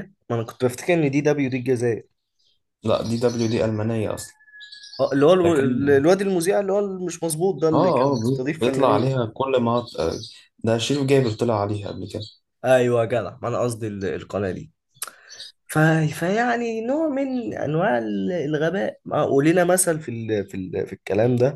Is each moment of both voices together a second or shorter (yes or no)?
no